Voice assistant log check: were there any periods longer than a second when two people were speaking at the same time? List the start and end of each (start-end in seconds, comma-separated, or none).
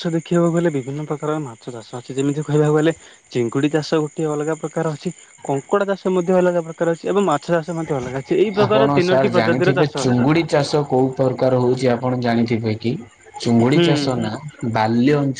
8.6-10.3